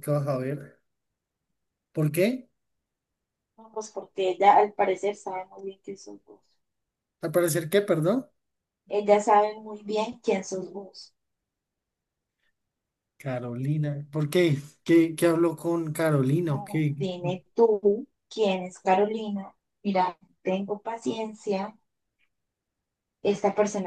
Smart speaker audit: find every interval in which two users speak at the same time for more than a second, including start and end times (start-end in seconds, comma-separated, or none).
none